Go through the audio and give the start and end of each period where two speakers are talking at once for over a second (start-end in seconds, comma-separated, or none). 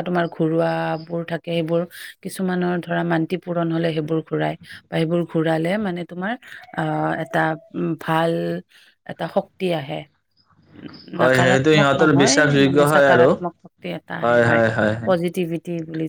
11.2-13.3